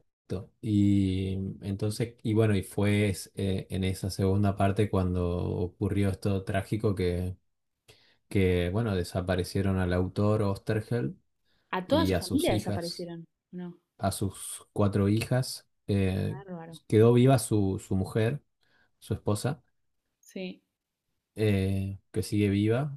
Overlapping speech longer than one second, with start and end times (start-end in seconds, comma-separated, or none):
11.8-13.1